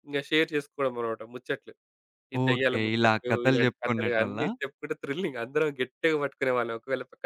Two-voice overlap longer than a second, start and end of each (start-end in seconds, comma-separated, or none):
2.5-4.5